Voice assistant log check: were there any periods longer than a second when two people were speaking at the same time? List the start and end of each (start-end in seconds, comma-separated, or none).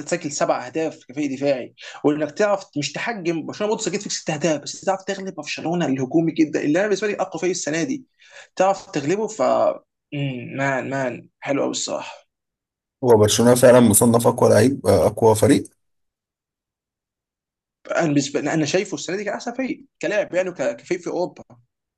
none